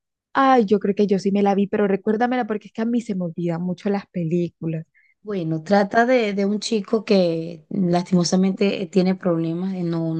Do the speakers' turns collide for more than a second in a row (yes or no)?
no